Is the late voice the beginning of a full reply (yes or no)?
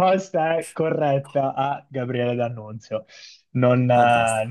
no